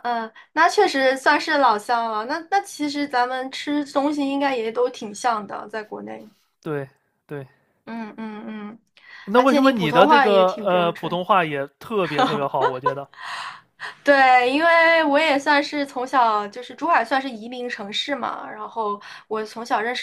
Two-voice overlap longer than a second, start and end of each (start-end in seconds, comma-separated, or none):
9.3-11.2